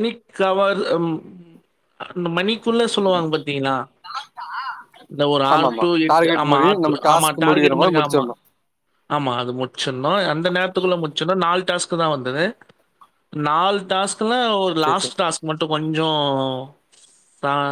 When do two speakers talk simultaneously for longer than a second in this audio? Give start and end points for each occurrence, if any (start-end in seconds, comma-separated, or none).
5.5-8.2